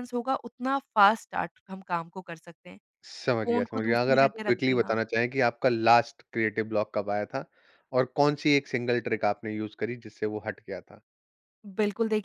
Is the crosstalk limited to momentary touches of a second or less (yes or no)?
no